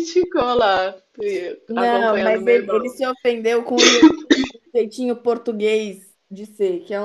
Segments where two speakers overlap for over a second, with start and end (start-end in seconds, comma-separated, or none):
1.7-3.0